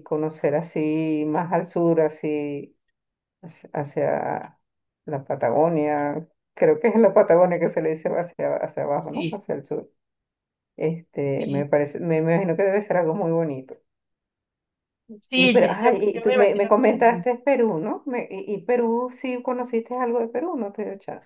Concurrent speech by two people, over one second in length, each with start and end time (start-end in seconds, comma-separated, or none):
15.3-17.2